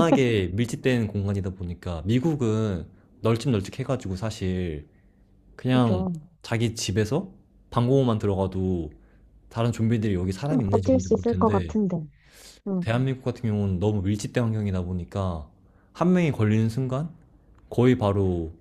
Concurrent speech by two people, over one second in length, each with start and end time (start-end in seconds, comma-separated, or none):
10.5-11.8